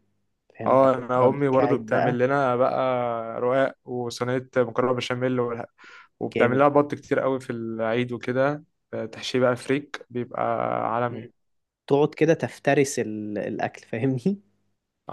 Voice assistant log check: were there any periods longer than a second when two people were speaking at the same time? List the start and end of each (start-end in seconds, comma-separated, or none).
0.7-2.2